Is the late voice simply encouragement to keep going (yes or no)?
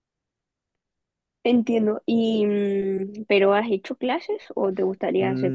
no